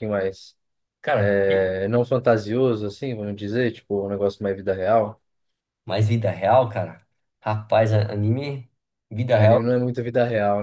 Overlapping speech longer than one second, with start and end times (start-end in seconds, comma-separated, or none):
none